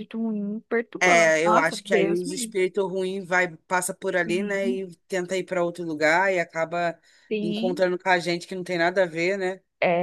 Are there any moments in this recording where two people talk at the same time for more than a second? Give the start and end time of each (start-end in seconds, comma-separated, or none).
1.0-2.5